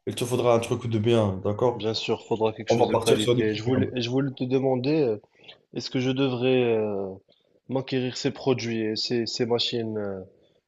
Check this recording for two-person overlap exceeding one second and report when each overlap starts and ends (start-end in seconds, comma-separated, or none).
2.7-3.9